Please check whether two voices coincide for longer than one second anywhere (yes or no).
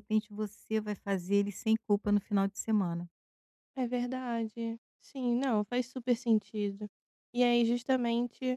no